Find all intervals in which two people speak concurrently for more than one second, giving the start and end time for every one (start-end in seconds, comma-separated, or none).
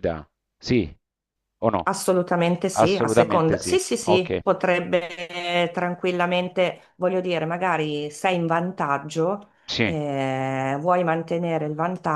2.8-4.4